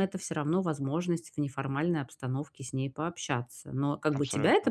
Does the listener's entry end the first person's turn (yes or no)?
no